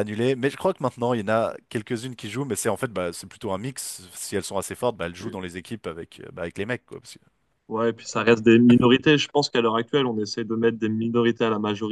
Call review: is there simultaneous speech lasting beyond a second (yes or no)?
no